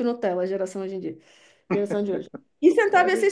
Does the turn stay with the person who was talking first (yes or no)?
yes